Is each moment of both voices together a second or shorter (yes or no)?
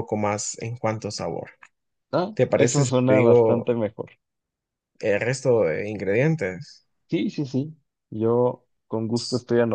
no